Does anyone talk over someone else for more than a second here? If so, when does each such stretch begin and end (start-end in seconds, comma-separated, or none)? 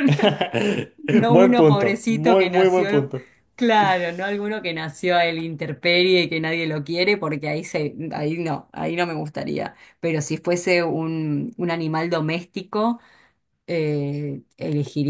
1.3-3.1